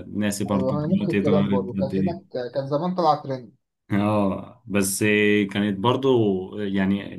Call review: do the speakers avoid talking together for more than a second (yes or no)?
no